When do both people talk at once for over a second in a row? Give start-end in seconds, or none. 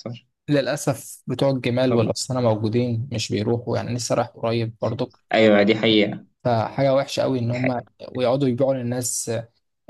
none